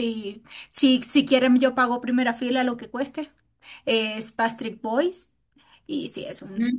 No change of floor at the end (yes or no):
yes